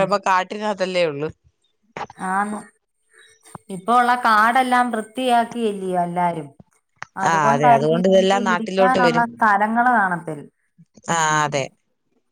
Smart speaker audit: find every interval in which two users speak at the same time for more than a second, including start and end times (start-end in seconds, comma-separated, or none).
7.3-9.2